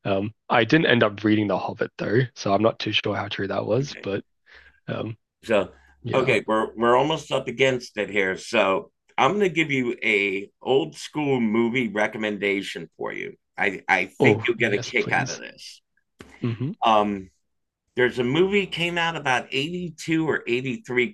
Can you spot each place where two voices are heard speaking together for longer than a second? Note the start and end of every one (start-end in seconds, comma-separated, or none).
14.2-15.4